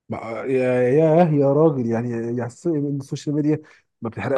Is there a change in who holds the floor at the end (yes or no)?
yes